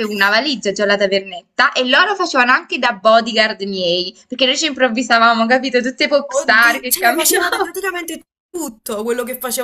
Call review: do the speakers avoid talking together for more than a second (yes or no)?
no